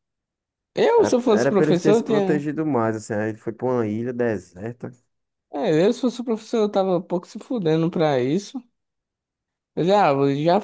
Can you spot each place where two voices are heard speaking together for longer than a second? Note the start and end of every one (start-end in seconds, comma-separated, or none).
1.0-2.5